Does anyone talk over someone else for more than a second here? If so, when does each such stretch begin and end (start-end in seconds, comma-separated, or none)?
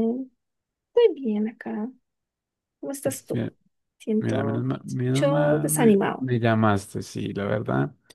4.2-6.3